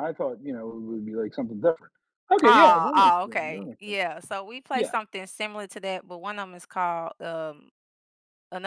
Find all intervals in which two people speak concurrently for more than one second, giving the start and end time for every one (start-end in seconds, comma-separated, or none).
2.4-4.0